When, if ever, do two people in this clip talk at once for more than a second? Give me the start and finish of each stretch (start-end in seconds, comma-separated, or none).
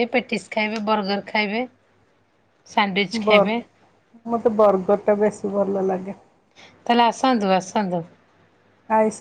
none